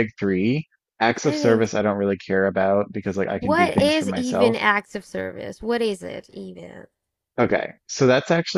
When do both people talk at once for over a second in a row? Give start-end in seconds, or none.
3.4-4.6